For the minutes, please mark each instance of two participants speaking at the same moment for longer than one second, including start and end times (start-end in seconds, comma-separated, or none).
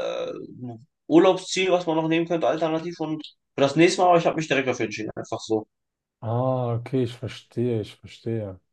none